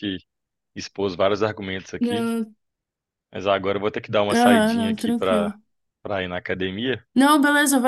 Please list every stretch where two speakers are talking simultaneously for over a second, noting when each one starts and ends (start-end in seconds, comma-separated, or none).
4.3-5.5